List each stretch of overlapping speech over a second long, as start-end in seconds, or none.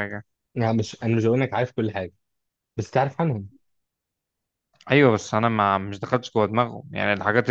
none